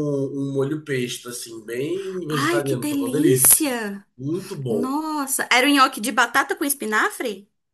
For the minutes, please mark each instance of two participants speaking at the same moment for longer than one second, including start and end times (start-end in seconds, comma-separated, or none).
2.3-3.8